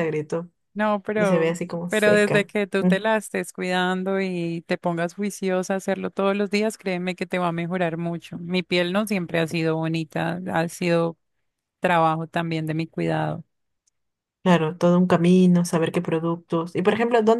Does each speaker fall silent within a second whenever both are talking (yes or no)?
no